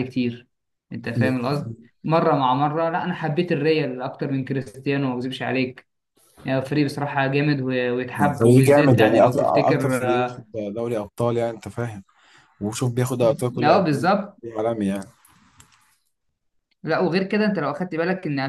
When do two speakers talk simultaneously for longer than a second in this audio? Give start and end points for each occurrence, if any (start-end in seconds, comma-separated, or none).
8.2-10.4